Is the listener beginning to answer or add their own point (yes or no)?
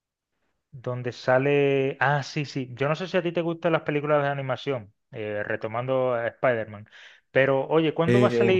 no